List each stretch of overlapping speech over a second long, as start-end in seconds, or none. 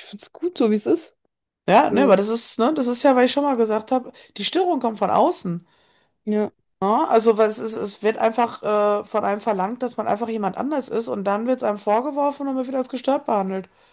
none